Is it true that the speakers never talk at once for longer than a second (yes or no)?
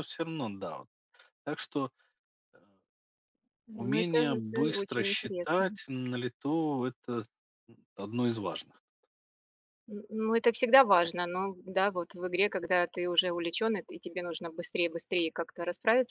no